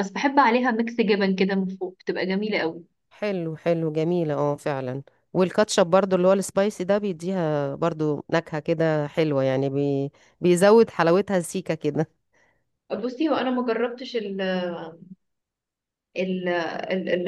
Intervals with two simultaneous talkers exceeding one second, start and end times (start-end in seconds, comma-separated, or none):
none